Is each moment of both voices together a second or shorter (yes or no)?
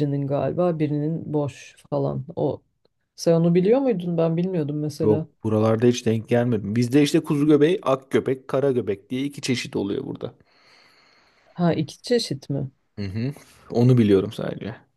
yes